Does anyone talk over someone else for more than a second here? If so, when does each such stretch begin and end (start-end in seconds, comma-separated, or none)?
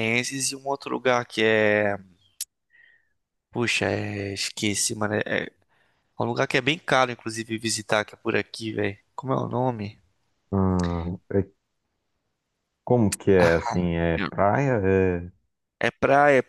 none